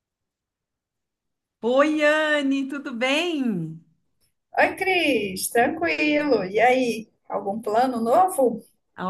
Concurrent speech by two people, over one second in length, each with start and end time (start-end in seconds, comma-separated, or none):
none